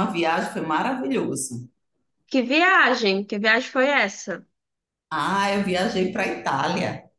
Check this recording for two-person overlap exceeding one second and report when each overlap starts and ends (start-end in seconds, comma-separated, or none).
none